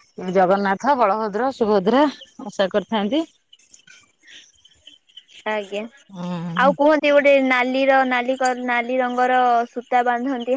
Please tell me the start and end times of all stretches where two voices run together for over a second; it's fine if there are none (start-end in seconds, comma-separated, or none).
none